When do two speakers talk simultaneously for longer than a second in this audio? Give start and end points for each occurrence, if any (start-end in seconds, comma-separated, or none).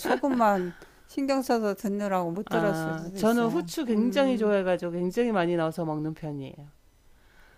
2.5-4.5